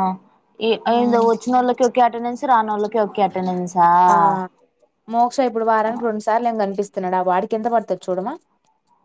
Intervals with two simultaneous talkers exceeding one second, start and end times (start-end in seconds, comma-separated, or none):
none